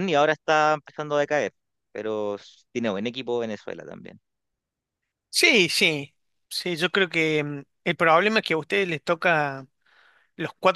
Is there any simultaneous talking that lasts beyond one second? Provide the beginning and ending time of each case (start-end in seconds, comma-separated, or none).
none